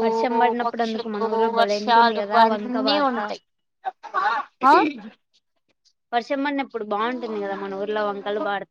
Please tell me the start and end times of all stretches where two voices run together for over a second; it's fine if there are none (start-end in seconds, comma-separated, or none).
0.6-3.2